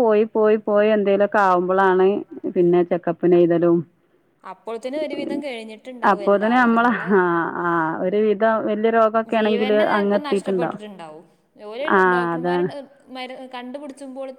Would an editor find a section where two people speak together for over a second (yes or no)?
no